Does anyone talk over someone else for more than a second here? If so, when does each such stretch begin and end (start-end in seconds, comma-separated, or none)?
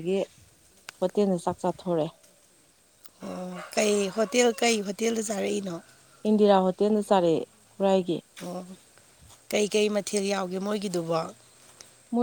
none